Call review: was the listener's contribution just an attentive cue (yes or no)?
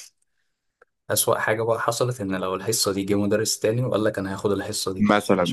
no